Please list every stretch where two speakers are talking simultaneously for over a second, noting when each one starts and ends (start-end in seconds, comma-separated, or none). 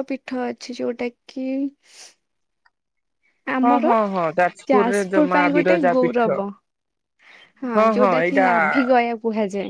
4.7-6.3